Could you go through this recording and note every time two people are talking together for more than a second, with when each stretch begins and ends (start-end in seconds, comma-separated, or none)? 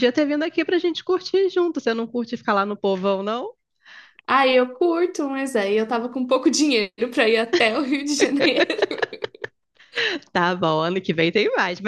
none